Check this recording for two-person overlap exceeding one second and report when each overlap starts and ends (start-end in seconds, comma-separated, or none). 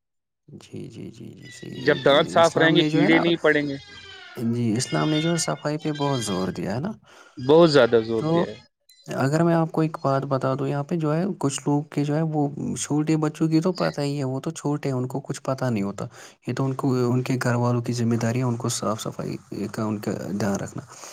1.8-3.2